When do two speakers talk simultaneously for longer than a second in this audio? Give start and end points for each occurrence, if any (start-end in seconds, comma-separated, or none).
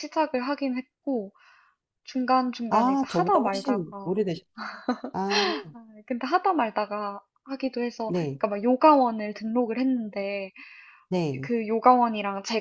2.7-4.2